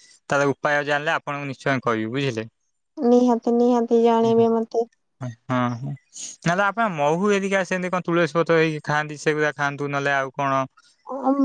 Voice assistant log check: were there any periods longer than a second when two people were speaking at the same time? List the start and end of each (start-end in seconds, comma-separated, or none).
none